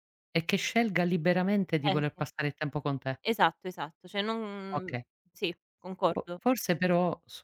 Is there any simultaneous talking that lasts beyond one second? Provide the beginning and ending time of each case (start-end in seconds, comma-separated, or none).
none